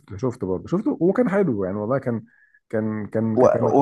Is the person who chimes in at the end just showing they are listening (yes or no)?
no